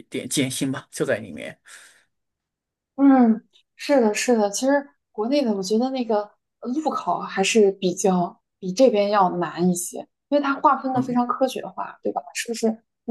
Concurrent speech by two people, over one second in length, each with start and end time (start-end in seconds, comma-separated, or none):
none